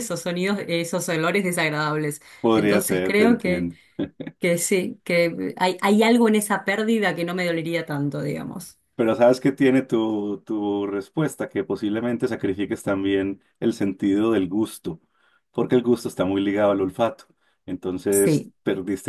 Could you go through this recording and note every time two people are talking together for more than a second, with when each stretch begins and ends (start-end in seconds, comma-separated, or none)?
2.4-3.7